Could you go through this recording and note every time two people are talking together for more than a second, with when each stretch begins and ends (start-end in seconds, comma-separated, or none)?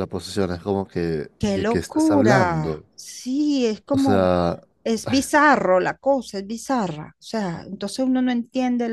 1.4-2.9